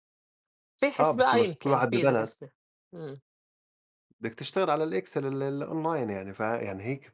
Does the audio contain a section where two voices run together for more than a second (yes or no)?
yes